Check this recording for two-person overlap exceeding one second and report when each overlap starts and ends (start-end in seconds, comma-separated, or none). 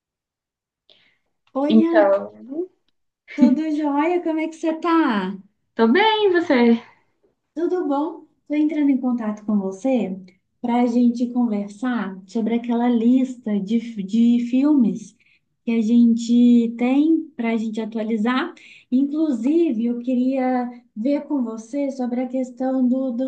none